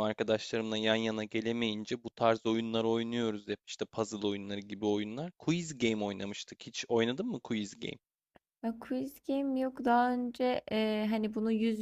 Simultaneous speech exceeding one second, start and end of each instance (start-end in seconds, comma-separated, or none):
none